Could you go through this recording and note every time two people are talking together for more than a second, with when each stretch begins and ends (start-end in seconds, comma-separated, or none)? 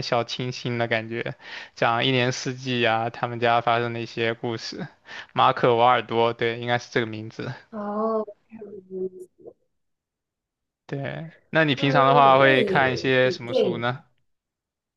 11.8-13.9